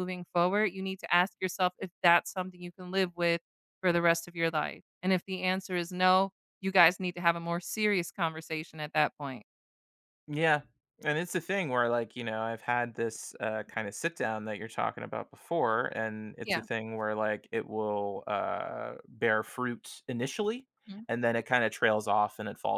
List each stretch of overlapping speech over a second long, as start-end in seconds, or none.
none